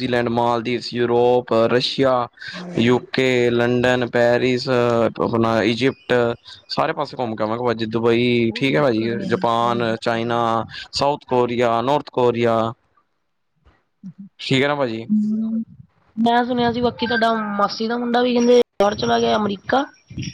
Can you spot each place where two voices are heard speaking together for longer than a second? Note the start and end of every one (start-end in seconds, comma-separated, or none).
8.5-10.2